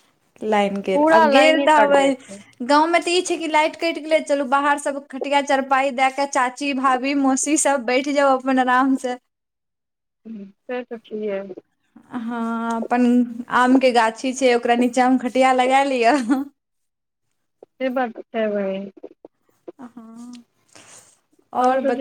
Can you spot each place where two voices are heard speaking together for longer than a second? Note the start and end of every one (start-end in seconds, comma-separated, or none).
0.9-2.4